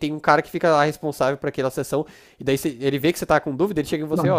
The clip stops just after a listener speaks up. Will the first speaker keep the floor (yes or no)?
yes